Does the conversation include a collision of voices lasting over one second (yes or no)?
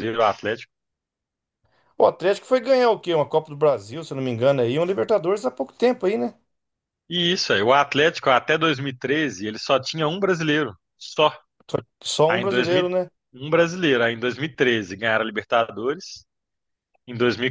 no